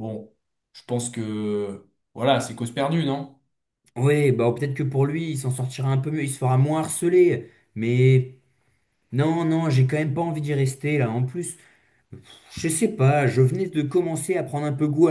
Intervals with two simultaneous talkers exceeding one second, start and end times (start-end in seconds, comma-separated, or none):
none